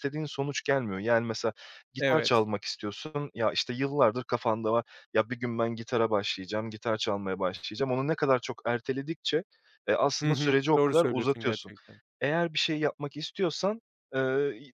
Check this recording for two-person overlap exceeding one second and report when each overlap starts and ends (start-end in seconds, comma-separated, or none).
10.2-11.7